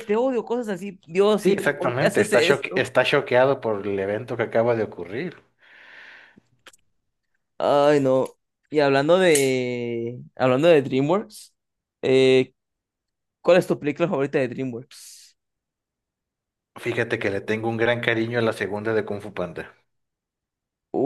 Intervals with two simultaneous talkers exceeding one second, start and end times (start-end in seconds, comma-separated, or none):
1.4-2.9